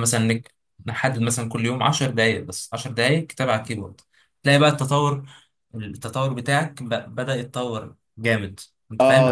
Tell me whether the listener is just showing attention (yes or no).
no